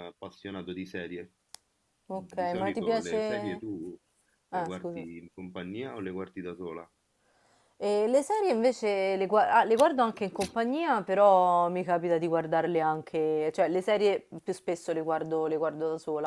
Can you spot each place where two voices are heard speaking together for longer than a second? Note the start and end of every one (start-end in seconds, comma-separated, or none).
2.1-3.6